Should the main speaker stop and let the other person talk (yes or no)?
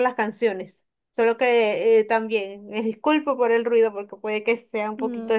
yes